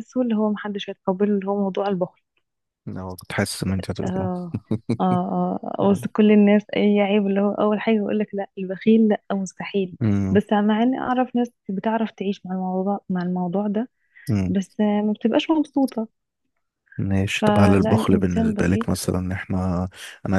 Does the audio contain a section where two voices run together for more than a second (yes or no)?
yes